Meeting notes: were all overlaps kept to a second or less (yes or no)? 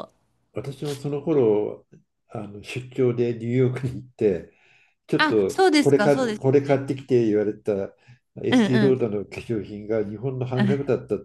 no